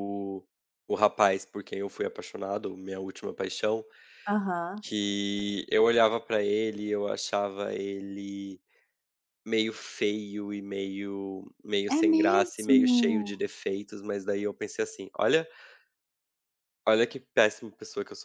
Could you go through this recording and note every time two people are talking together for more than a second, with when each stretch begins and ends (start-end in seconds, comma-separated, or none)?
11.9-13.4